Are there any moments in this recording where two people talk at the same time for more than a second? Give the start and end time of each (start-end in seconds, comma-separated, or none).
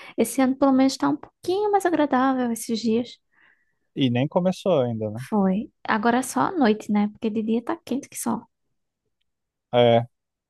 none